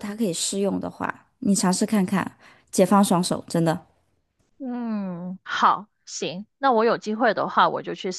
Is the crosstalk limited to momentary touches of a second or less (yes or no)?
yes